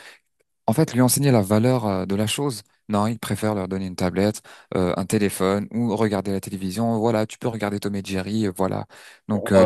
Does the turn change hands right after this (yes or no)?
no